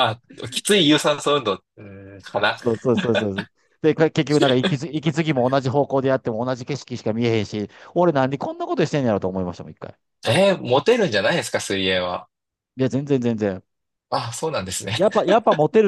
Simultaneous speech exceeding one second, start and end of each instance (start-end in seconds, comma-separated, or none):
none